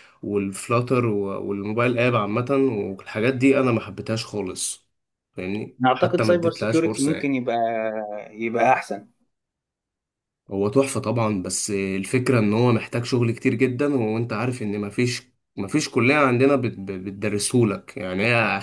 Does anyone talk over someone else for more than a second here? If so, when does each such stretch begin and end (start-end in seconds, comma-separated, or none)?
5.8-7.4